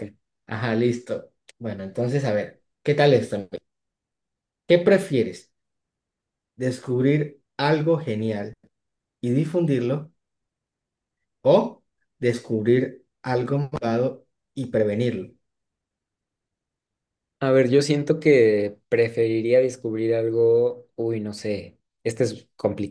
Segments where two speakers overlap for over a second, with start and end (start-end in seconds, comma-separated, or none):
none